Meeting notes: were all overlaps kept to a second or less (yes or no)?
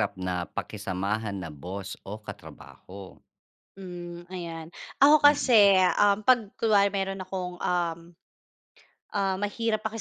yes